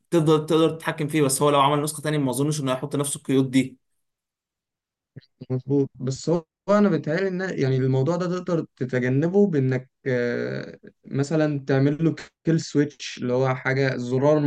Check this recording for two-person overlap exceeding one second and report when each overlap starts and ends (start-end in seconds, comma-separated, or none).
none